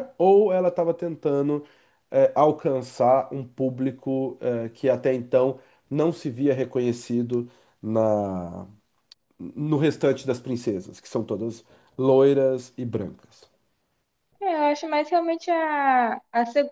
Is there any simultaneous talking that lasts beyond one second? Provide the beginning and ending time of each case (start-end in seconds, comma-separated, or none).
none